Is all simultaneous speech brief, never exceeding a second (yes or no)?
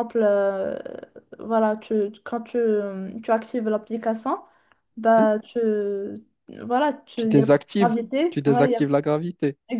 no